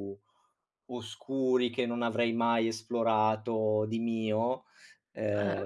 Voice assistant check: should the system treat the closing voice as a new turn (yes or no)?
no